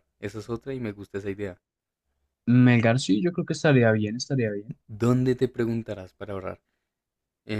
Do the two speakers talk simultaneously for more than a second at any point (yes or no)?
no